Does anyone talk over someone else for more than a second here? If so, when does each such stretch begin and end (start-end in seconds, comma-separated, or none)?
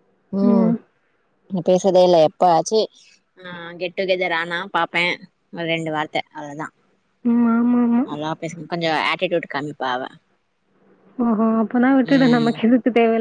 none